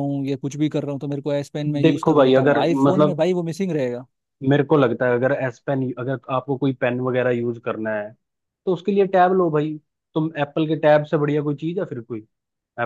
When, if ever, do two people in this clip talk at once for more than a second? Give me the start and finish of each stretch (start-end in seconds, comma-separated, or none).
1.9-3.2